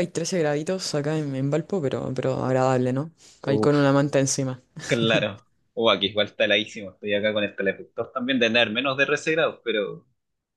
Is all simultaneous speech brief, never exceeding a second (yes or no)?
yes